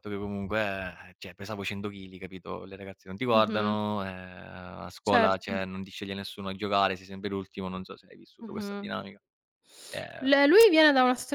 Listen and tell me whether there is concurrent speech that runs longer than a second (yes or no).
no